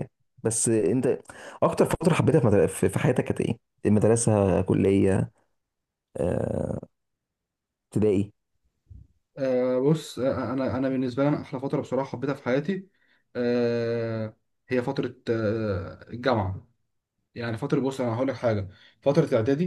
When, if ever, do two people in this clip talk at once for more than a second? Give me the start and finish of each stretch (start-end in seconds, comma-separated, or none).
none